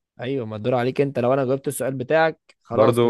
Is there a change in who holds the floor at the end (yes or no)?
yes